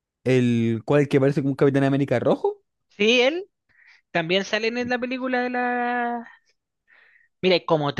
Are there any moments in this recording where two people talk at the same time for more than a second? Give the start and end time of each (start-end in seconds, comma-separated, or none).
none